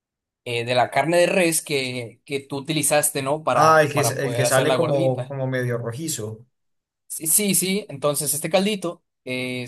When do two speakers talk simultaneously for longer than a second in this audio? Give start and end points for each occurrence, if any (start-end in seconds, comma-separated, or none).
3.5-5.3